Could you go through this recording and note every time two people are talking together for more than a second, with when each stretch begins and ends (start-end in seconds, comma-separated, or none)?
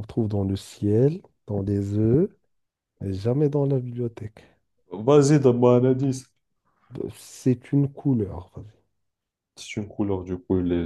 none